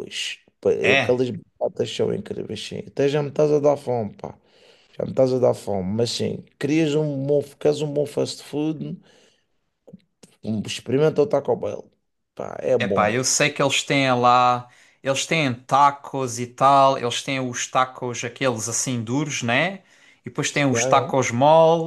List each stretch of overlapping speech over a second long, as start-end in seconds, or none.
none